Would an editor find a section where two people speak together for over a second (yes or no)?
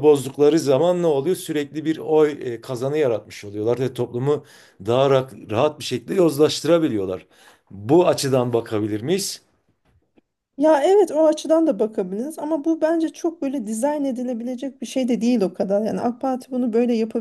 no